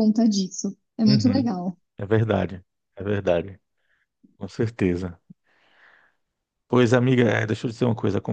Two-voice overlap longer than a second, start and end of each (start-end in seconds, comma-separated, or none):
none